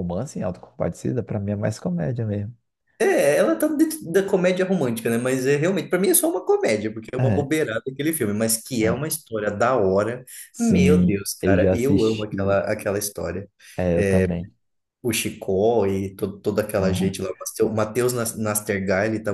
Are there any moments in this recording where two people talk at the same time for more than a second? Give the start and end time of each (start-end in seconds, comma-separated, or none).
10.5-12.3